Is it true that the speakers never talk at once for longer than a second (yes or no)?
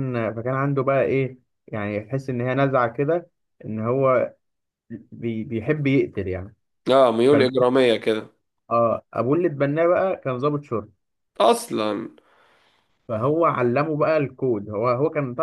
yes